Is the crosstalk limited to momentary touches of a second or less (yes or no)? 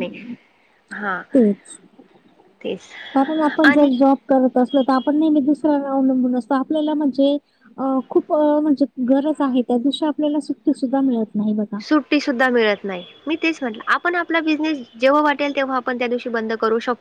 yes